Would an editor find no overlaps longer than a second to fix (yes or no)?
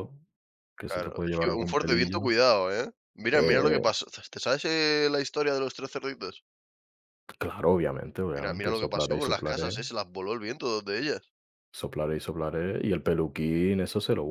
no